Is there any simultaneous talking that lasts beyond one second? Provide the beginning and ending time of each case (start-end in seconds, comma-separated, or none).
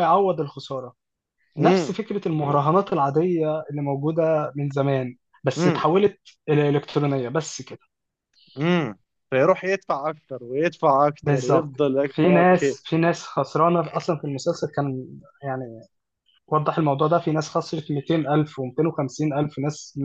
11.2-12.8